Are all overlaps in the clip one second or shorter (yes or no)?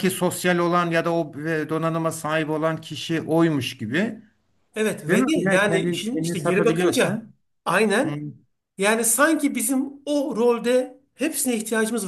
no